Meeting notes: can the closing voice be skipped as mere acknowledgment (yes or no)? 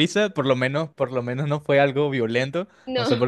yes